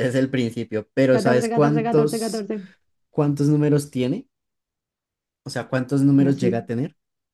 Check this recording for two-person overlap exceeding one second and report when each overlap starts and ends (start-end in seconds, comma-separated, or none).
1.1-2.5